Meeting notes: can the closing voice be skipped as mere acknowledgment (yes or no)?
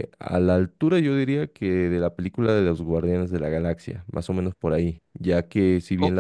yes